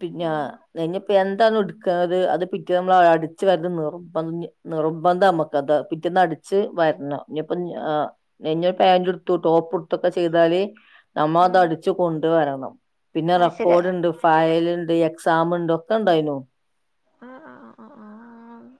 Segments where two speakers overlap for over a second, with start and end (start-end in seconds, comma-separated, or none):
none